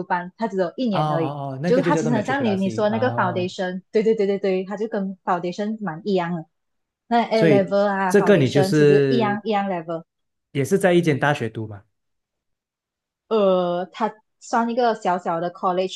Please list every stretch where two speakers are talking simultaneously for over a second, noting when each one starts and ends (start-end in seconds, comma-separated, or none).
0.9-3.5, 7.3-9.4